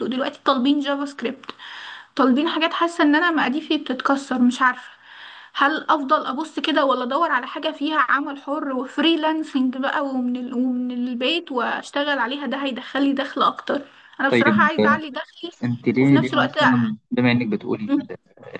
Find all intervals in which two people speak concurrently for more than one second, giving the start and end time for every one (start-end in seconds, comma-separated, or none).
none